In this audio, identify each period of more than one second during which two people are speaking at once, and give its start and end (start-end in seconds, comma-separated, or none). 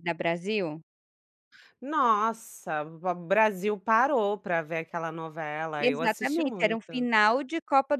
5.8-7.1